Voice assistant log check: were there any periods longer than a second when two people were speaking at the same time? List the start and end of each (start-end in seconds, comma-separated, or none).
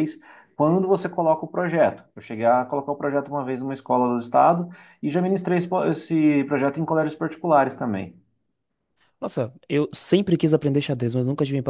none